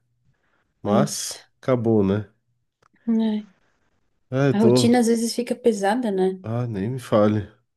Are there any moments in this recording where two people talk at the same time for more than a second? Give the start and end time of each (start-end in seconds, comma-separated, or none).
none